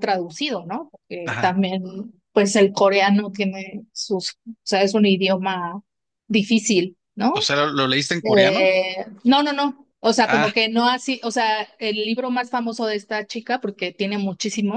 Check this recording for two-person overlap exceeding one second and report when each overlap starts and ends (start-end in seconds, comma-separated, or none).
none